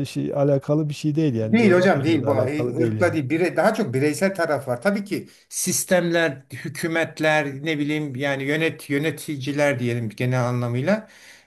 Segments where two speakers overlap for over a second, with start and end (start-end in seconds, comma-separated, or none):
1.4-3.2